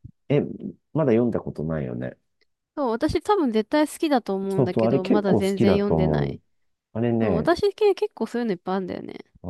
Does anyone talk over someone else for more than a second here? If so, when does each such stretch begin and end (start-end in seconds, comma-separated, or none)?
4.5-6.4